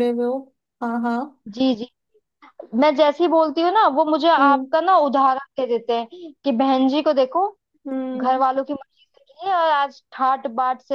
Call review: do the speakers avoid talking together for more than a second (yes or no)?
yes